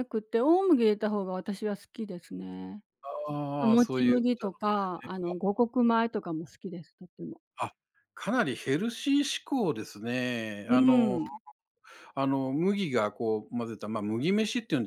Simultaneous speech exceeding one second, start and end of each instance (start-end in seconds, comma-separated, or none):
3.6-5.1